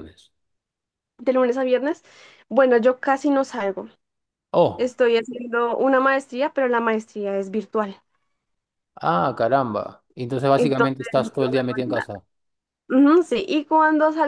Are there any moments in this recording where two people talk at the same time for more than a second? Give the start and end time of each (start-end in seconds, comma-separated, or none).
10.6-12.1